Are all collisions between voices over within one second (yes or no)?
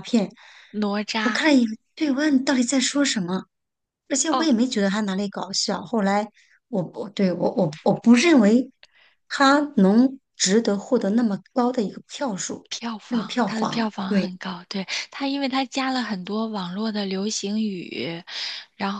no